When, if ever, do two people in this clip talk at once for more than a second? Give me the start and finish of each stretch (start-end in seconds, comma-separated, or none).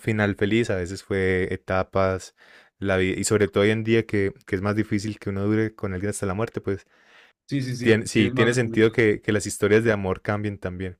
7.8-9.1